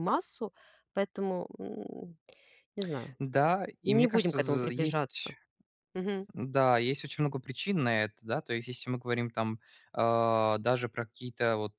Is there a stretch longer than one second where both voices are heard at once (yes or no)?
yes